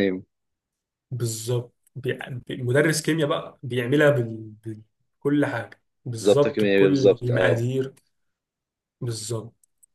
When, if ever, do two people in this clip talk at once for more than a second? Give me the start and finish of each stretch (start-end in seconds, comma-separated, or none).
6.2-7.7